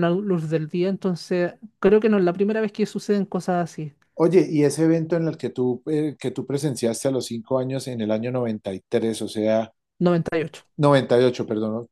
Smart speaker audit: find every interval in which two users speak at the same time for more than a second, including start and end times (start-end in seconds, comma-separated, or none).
none